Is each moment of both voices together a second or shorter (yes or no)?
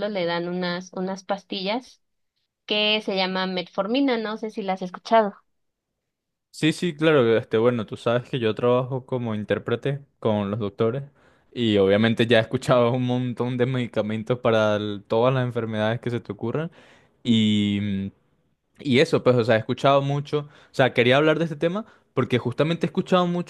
yes